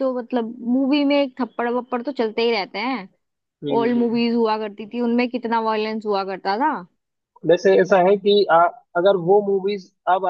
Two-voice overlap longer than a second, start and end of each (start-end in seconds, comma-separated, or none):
none